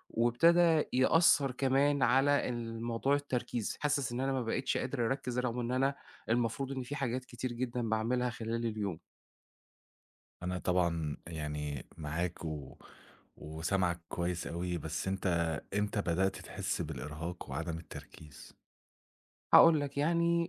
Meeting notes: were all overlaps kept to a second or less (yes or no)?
yes